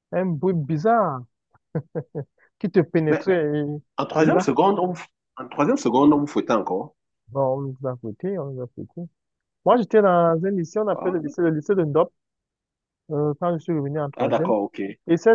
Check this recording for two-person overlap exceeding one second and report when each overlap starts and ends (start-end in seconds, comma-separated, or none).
none